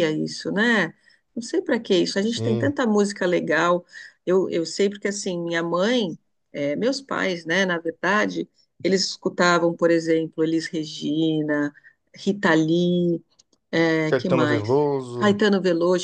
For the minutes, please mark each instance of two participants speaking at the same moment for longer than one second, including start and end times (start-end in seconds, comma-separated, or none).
14.1-15.4